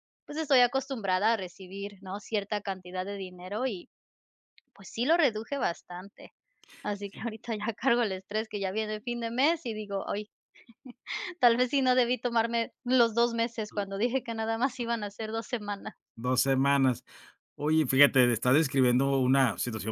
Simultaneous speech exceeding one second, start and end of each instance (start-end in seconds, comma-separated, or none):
none